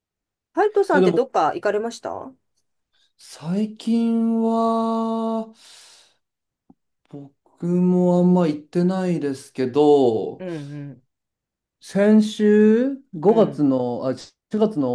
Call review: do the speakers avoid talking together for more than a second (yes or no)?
yes